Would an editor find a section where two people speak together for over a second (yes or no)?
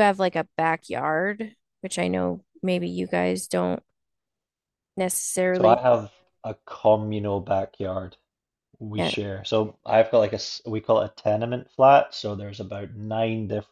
no